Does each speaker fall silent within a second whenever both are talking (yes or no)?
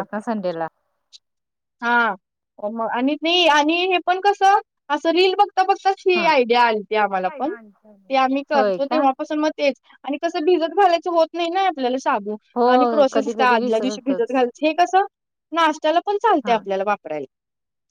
no